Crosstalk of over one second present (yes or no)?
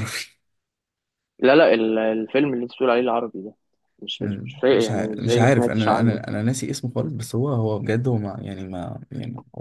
yes